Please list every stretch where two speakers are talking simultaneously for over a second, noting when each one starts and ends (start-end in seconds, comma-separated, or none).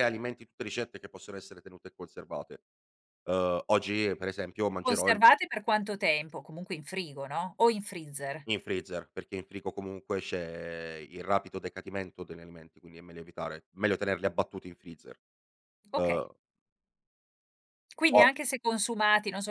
none